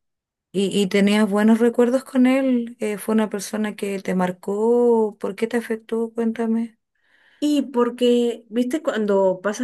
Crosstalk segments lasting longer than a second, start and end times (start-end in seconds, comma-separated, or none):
none